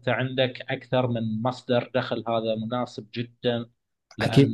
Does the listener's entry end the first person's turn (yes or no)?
no